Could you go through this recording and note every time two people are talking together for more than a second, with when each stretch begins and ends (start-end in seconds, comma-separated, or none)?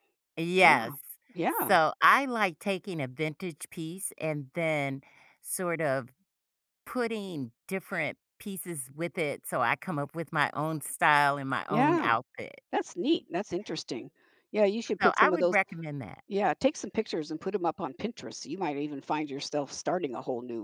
none